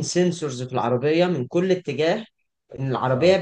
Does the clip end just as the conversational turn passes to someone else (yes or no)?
no